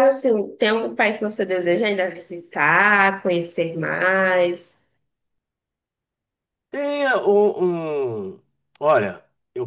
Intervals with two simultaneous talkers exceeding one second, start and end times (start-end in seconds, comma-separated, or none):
none